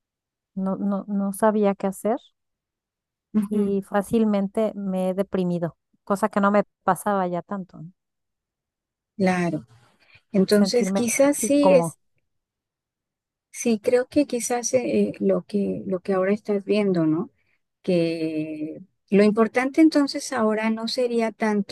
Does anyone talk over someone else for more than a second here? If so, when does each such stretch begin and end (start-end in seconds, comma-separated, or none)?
10.5-11.9